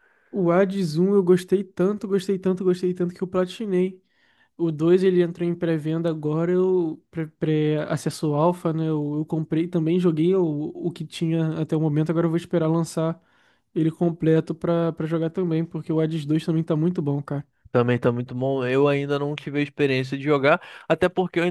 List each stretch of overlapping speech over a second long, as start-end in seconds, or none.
none